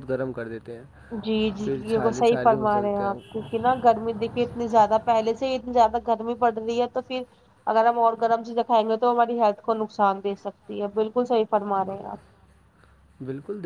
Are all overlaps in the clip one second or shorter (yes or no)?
no